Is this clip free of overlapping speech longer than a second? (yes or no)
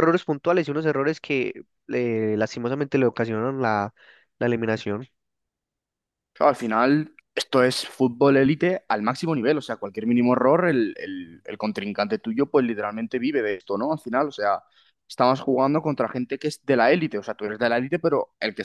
yes